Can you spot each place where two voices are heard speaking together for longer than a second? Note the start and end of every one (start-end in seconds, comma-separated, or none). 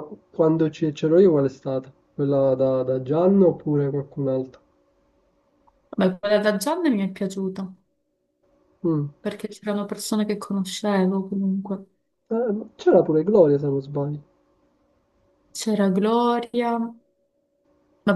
none